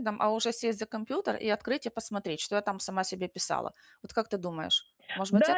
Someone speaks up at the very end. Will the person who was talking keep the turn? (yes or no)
no